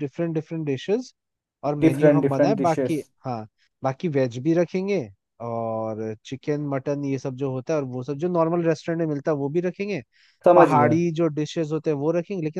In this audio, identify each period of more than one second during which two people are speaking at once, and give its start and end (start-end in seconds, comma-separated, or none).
1.8-3.0